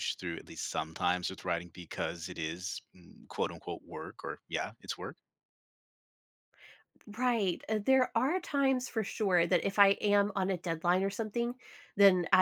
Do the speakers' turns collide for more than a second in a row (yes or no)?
no